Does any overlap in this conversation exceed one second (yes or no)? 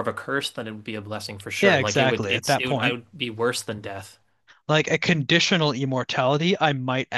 yes